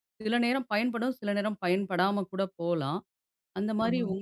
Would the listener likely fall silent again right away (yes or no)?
yes